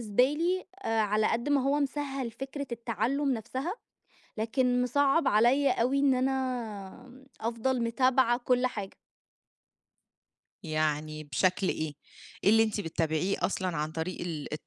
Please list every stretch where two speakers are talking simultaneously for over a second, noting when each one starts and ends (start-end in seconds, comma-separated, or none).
none